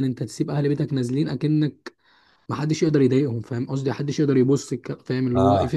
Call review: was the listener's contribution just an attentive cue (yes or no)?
no